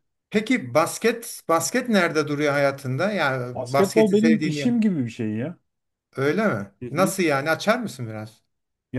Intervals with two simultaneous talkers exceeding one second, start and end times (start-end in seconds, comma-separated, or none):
3.5-4.7